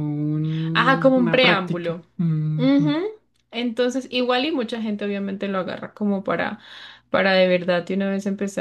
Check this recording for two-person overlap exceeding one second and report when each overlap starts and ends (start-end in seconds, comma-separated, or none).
0.7-2.1